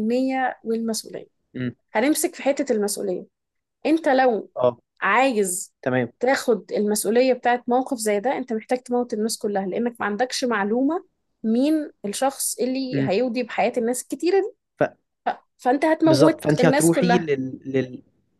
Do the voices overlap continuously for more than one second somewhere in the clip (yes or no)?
yes